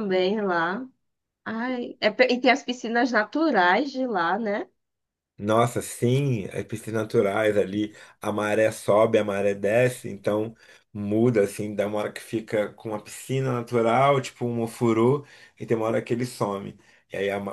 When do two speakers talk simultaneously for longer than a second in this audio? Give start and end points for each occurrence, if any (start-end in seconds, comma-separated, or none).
none